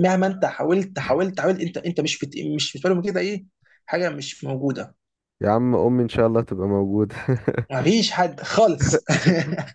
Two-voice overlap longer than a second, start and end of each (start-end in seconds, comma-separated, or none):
none